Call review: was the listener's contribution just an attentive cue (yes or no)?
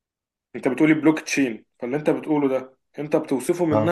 yes